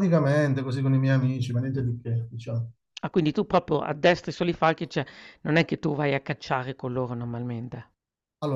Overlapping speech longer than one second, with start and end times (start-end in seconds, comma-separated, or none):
none